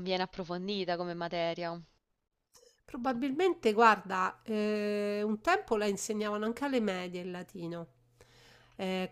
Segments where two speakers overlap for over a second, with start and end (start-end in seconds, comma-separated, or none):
none